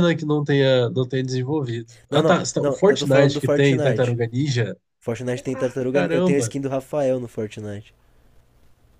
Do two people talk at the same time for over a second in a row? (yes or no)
yes